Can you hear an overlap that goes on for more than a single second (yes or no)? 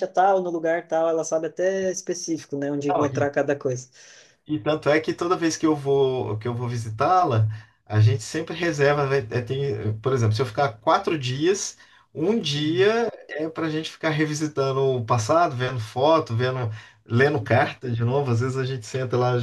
no